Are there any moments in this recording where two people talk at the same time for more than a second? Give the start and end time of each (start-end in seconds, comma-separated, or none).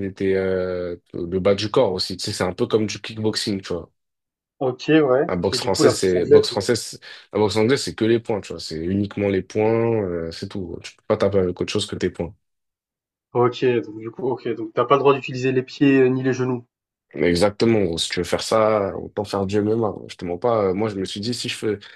5.3-6.6